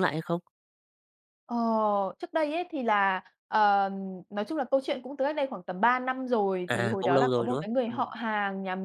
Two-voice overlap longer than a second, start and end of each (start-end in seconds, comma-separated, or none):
6.7-8.1